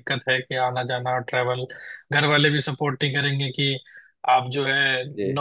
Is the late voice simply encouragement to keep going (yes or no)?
yes